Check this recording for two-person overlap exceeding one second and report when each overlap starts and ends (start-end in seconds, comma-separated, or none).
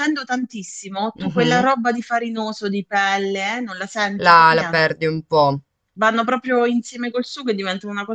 none